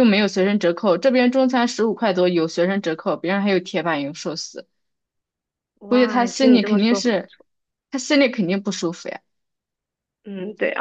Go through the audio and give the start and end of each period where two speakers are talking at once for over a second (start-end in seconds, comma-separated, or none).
5.9-7.3